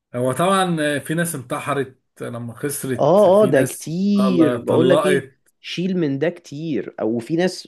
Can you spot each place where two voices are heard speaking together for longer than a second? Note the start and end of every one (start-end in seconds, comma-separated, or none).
3.0-5.2